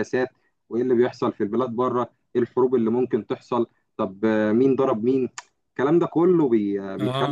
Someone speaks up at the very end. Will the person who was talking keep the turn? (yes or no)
no